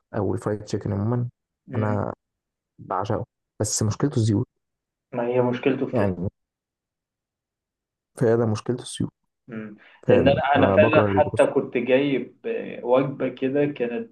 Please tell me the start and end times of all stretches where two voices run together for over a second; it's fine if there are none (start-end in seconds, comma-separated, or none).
10.1-11.5